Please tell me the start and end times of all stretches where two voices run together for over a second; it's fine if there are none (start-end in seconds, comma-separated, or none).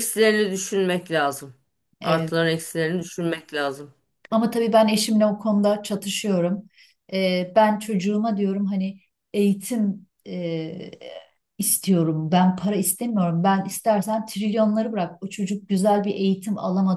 none